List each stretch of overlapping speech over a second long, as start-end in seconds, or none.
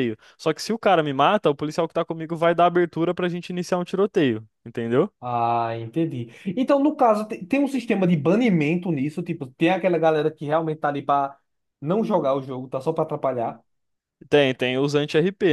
none